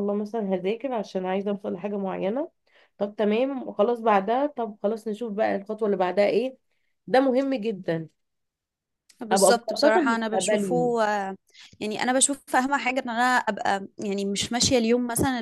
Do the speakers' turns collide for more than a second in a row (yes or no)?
yes